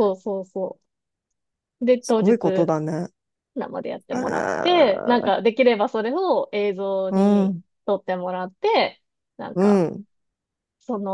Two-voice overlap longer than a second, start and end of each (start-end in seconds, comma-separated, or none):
4.1-5.5